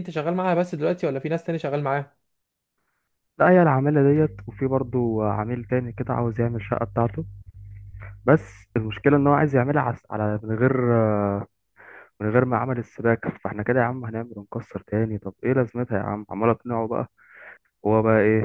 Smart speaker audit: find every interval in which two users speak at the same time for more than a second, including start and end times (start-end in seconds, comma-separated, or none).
none